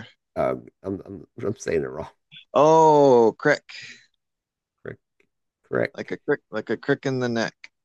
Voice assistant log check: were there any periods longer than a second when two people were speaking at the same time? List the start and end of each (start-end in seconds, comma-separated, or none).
none